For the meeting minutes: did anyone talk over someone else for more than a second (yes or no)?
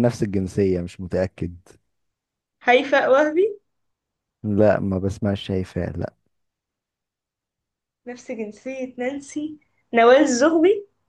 no